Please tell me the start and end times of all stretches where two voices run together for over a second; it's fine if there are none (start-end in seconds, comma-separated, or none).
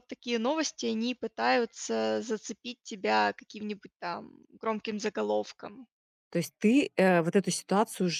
none